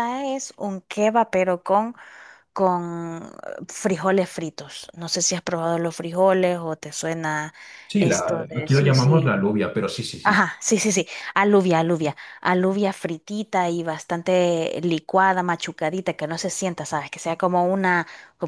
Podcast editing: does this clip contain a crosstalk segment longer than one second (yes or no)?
yes